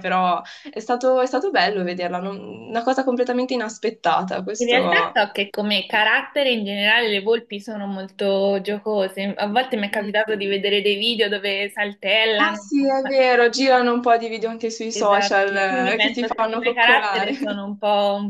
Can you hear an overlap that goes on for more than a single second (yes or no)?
yes